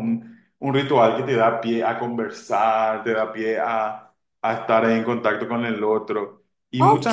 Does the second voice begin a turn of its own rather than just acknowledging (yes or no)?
yes